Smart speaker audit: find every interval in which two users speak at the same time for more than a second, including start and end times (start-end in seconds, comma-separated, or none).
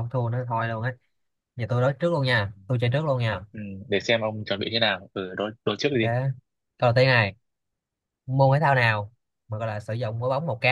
none